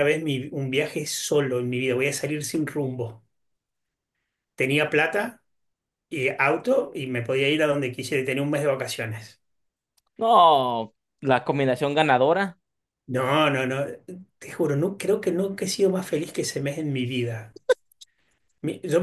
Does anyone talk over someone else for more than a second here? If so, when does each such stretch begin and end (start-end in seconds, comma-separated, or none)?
none